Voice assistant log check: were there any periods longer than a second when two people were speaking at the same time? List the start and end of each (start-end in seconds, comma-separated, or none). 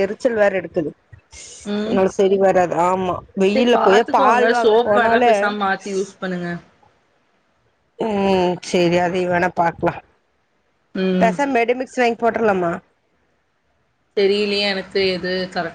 3.5-5.3